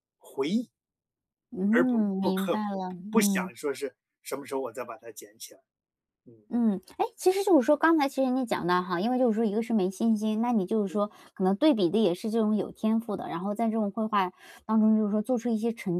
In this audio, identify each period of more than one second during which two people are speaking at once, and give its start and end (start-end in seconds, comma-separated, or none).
1.7-3.5